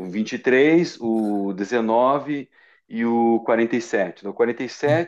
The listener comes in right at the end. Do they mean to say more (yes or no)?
yes